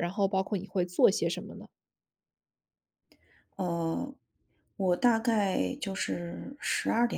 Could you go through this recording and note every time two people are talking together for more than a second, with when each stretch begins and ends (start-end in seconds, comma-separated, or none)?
none